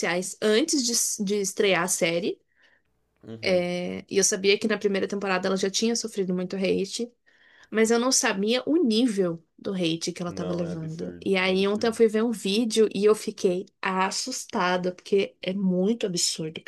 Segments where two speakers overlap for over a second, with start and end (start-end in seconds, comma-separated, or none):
10.3-12.0